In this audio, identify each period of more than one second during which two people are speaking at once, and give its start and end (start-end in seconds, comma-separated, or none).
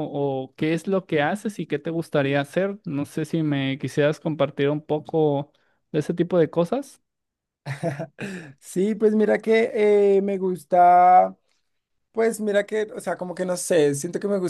none